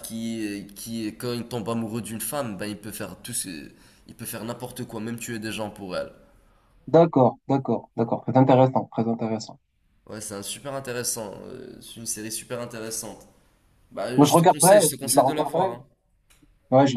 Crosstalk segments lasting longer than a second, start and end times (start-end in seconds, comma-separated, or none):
14.2-15.8